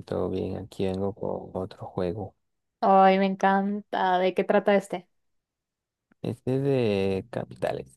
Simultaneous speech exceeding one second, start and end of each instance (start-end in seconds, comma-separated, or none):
none